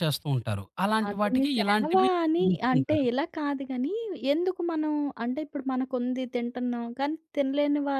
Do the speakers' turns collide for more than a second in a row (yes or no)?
yes